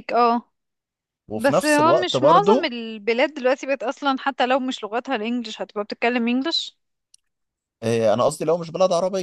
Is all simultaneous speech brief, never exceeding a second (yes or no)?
no